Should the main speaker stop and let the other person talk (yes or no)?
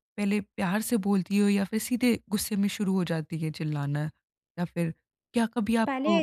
no